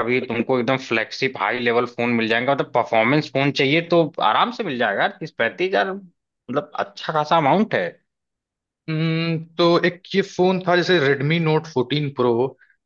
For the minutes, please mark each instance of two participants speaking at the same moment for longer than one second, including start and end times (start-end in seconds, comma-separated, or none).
none